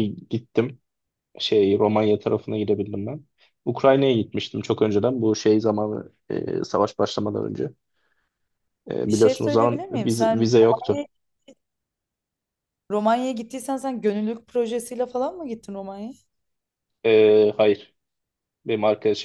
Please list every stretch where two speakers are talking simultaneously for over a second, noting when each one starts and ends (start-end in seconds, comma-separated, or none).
9.1-11.0